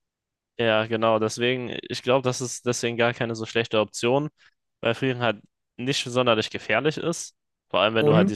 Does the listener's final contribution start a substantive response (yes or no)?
no